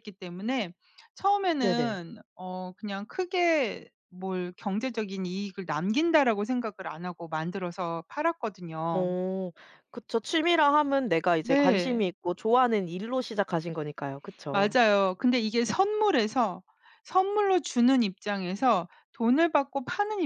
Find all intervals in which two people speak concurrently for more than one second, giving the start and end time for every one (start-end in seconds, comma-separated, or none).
none